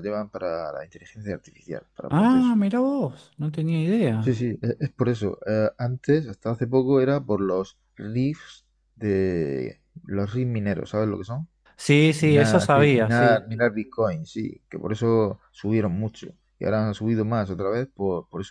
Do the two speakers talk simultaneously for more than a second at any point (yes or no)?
yes